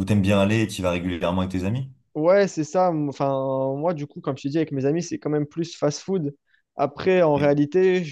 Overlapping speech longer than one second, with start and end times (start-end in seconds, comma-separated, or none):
none